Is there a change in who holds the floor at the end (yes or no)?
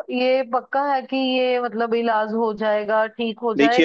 yes